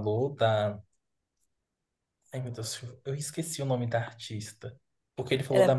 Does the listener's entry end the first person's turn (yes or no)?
no